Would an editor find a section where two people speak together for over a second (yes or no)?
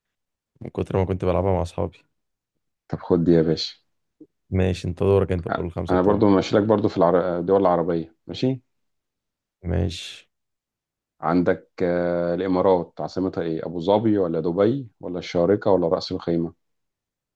no